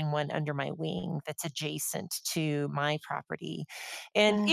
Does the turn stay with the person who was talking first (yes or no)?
yes